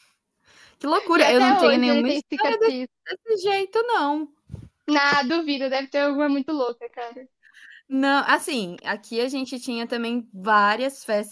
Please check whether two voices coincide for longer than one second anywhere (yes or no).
yes